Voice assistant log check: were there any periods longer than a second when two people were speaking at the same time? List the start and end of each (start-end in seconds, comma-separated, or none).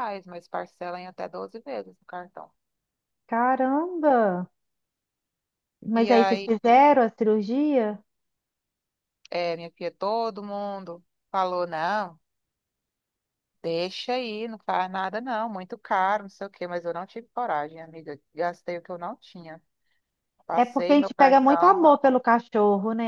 20.6-21.9